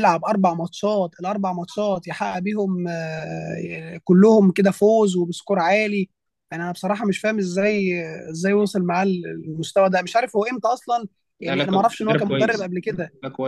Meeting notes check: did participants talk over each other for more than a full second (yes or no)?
yes